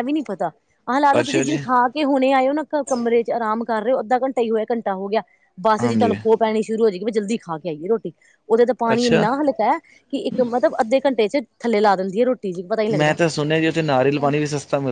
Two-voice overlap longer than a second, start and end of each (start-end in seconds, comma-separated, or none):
none